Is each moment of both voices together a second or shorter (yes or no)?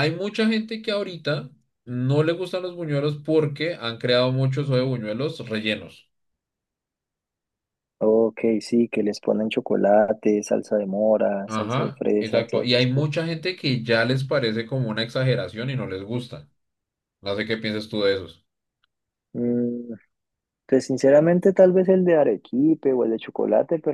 no